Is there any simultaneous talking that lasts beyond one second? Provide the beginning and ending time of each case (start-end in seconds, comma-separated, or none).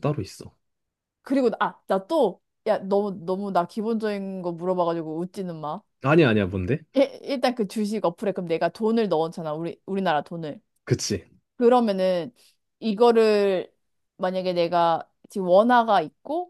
none